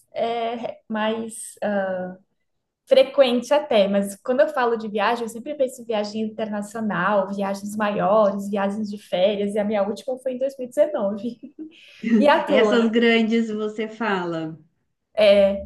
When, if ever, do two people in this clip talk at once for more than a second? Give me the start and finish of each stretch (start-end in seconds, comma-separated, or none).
none